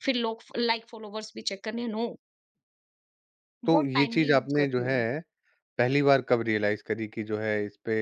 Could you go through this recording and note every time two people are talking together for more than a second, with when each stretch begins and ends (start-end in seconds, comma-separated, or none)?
3.6-5.0